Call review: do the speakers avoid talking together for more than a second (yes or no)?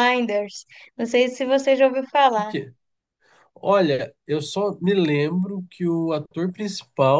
yes